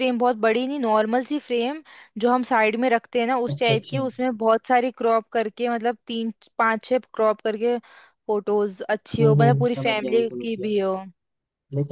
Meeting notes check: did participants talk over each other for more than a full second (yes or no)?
yes